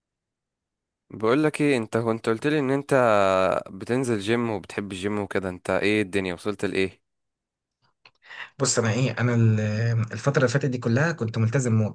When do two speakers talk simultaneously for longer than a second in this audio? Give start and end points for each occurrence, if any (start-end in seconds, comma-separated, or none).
none